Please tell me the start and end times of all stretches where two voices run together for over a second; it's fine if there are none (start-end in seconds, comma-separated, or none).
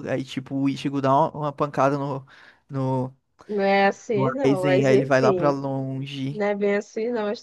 4.1-5.6